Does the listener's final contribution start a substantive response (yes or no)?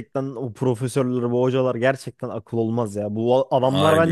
no